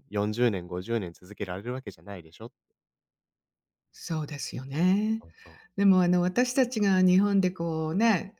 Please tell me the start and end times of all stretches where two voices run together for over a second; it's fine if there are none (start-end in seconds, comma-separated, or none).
none